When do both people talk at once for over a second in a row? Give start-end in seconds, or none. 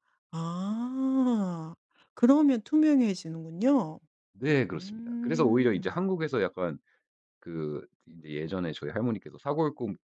4.7-6.1